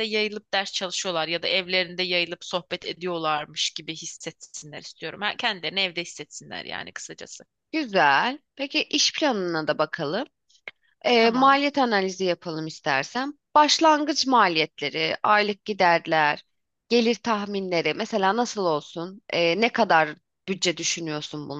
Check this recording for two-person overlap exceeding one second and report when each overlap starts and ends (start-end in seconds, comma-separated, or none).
none